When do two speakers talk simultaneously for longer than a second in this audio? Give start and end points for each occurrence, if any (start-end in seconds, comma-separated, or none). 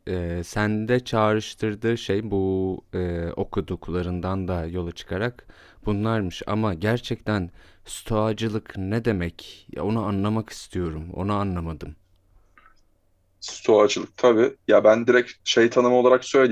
none